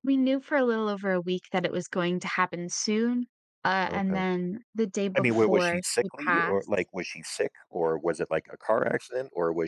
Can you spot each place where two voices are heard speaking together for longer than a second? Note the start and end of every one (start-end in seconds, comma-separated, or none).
5.2-6.9